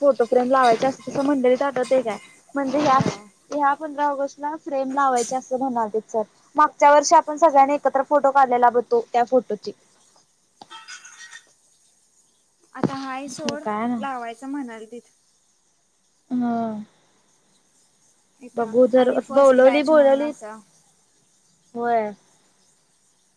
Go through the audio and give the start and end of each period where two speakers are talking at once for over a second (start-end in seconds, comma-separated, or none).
18.6-20.3